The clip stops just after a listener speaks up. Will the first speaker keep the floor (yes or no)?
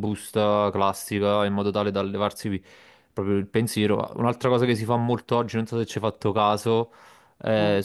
yes